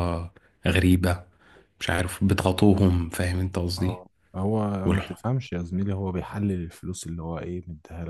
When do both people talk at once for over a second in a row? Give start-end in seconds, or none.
none